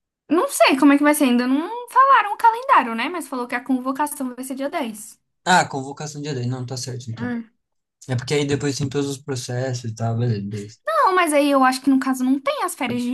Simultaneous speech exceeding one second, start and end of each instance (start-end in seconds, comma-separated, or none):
none